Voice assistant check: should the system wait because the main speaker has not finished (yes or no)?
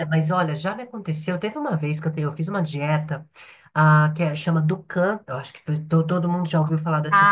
no